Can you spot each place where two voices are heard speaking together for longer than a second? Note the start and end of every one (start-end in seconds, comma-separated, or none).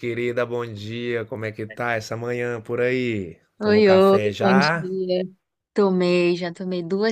3.6-4.9